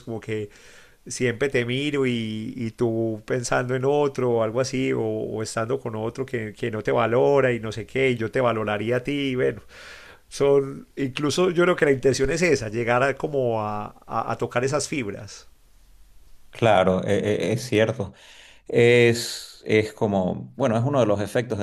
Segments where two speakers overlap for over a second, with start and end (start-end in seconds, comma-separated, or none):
none